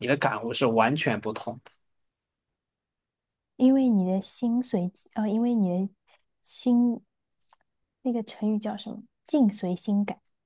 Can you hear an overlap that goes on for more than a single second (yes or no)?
no